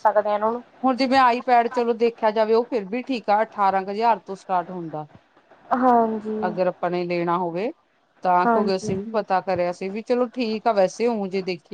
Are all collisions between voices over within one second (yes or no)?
yes